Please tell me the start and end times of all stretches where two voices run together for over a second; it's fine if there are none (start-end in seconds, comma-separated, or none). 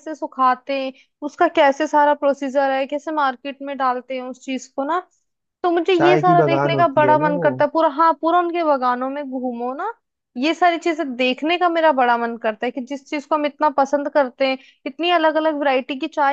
5.9-7.5